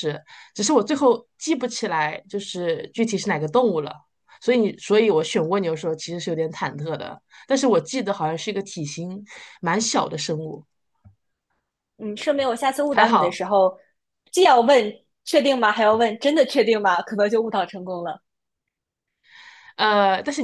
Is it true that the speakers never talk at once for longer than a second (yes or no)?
yes